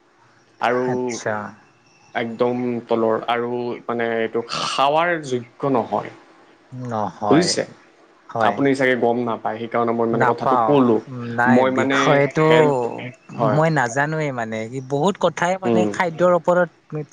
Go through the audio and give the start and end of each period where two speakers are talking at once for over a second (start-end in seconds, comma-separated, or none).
none